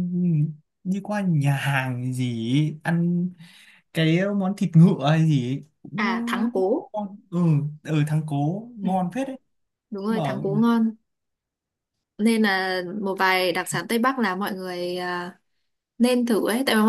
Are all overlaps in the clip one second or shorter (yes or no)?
yes